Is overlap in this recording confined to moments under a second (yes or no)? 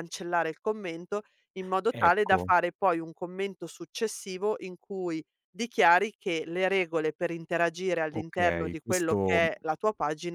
no